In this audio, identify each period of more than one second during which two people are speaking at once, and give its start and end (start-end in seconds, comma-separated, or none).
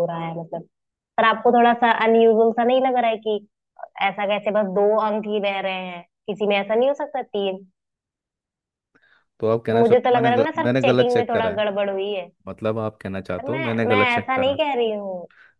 9.7-11.6, 13.1-14.6